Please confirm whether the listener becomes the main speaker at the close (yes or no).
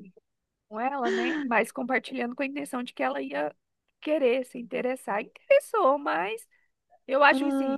no